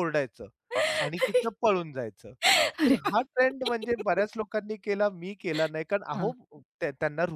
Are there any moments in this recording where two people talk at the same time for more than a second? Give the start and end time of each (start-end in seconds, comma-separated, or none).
2.9-4.3